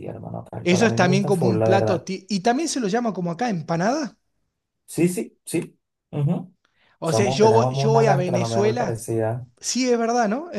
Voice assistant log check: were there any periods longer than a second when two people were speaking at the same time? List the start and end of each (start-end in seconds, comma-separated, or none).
0.6-2.1, 7.0-9.0